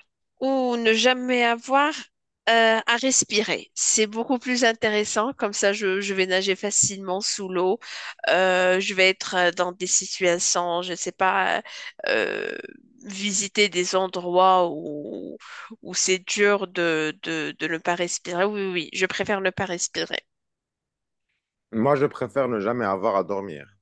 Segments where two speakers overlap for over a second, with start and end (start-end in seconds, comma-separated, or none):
none